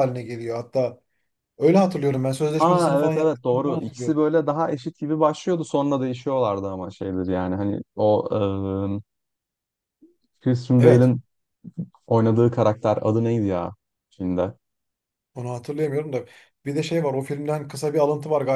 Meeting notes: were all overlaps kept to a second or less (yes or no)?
no